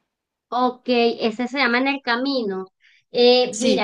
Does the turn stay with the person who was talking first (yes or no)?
yes